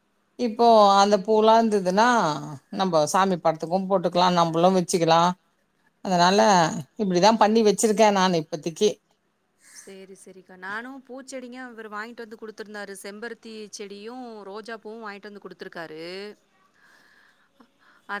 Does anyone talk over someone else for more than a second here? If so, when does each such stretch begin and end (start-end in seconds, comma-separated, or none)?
none